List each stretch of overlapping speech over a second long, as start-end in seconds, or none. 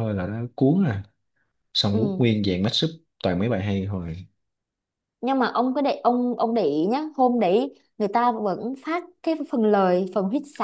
none